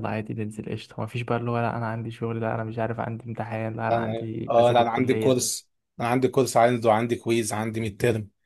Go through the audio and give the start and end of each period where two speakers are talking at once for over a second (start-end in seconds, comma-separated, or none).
3.9-5.4